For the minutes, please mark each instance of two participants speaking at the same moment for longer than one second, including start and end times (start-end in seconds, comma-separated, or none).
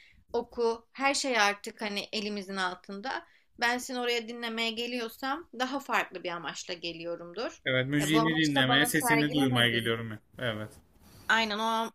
8.0-10.0